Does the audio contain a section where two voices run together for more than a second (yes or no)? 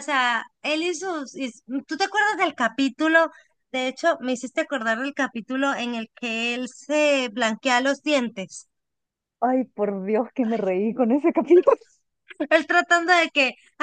no